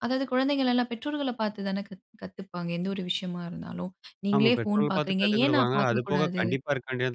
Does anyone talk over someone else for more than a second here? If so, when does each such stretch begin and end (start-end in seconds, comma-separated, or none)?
4.3-6.4